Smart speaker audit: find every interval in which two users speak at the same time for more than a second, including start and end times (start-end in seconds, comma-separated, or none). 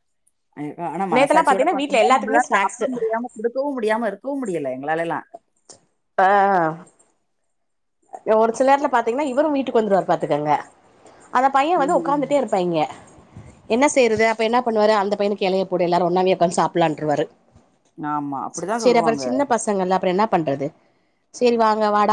1.1-2.8